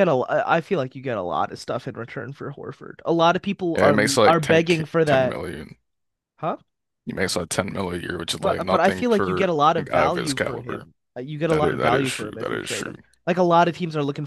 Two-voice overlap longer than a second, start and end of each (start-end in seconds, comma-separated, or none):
3.8-5.4, 8.4-10.9, 11.5-13.0